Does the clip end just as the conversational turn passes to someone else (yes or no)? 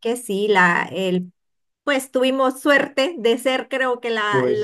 no